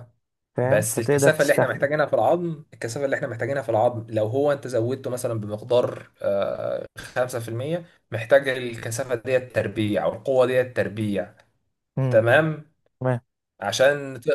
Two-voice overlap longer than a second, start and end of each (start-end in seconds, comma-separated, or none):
0.6-1.9